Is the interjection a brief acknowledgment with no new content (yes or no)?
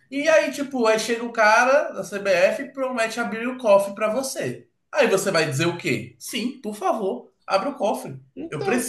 yes